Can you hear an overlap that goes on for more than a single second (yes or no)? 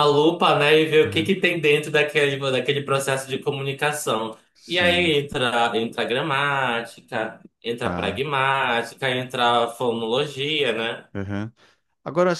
no